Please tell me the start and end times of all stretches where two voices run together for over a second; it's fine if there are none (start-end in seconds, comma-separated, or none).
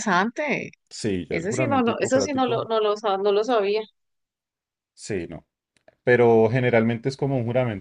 1.3-2.6